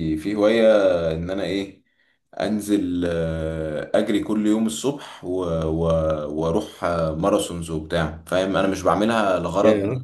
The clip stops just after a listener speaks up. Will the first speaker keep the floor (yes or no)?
yes